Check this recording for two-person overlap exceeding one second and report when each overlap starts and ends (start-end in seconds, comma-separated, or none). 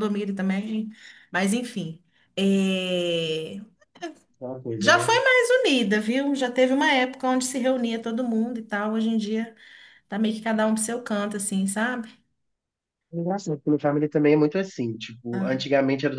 none